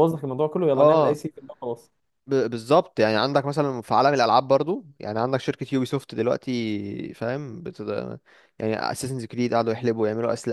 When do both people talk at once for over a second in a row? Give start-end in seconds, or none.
none